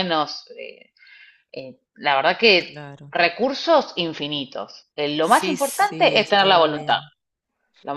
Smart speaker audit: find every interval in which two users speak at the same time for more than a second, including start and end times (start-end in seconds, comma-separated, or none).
5.2-7.0